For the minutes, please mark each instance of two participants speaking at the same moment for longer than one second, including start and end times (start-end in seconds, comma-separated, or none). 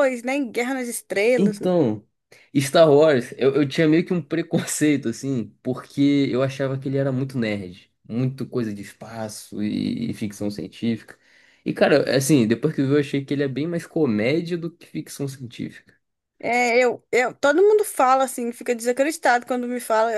none